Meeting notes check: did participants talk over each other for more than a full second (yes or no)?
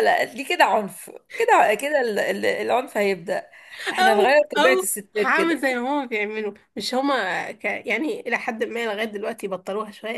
yes